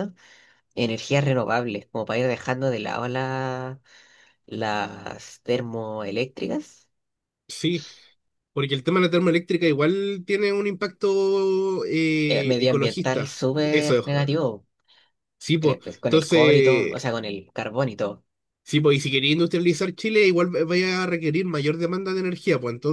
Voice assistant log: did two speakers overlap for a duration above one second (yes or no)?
yes